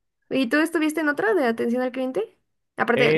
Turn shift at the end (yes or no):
yes